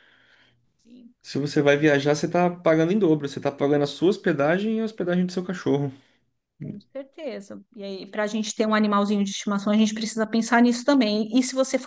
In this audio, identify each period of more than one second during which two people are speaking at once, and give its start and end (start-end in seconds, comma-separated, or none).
none